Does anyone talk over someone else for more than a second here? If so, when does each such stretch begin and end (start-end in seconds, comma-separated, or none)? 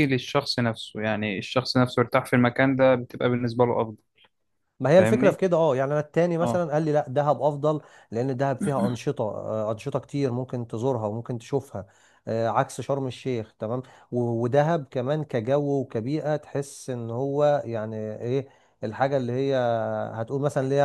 none